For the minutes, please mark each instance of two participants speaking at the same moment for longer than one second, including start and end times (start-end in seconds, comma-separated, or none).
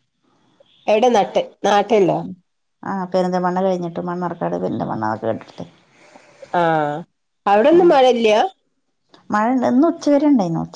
none